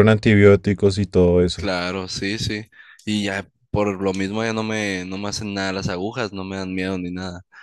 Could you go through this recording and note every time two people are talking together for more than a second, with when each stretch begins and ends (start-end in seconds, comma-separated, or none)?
none